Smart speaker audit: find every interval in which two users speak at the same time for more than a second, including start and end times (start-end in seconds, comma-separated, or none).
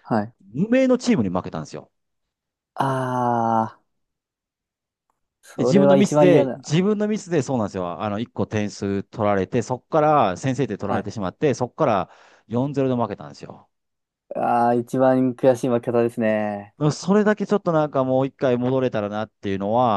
5.6-6.8